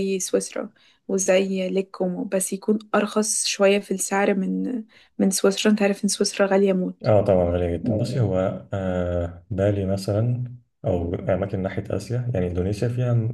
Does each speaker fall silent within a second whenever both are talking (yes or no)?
yes